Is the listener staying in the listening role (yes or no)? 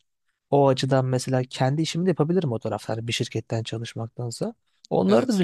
yes